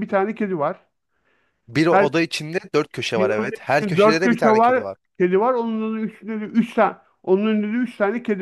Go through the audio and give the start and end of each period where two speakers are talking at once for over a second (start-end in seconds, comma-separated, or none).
3.2-5.0